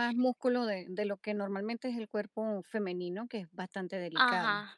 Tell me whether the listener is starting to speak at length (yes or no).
yes